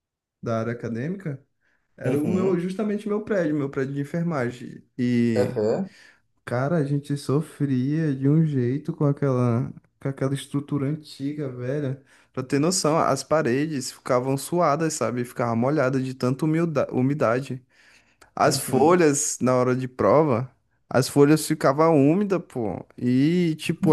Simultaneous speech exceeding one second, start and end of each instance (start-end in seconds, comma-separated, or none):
none